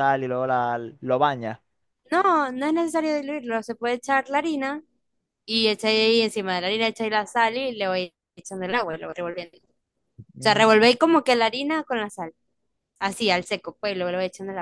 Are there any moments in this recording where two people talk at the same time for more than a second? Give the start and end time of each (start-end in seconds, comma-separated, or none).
none